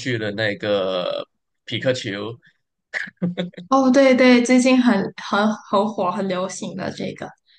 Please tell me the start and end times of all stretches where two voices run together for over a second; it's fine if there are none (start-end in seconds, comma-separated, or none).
none